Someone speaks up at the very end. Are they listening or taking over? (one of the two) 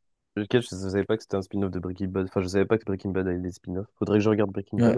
taking over